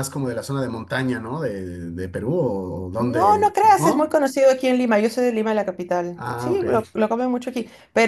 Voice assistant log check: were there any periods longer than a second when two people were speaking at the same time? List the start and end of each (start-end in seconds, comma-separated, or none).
3.0-4.2